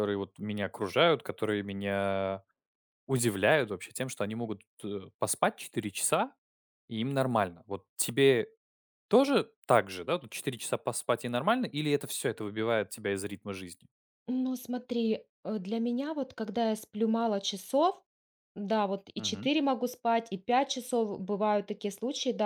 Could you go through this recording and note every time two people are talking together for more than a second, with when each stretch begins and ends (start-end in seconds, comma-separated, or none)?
none